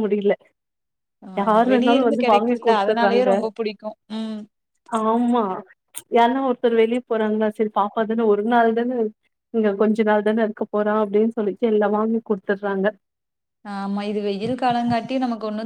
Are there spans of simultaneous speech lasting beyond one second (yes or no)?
yes